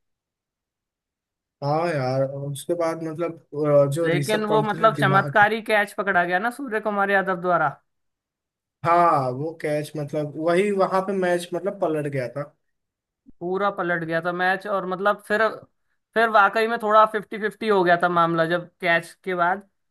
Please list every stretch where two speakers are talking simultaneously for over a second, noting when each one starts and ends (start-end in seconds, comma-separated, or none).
4.0-5.4